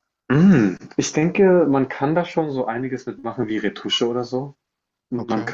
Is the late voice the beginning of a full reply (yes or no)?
no